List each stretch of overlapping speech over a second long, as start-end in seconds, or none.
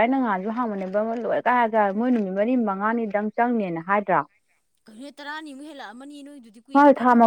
none